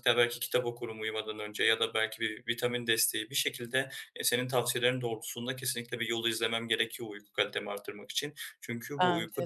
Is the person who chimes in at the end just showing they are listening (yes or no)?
yes